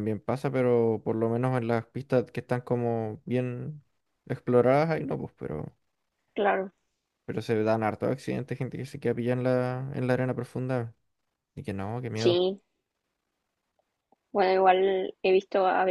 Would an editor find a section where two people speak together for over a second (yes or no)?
no